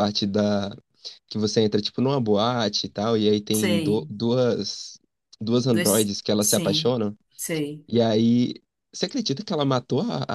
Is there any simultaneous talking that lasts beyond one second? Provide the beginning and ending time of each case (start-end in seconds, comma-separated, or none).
5.7-7.0